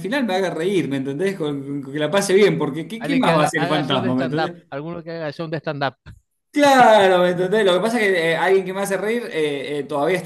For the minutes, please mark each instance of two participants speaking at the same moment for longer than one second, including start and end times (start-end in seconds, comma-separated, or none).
3.0-4.6